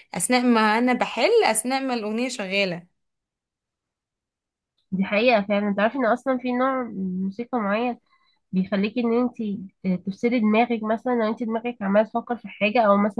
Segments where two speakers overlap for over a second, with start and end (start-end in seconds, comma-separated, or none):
none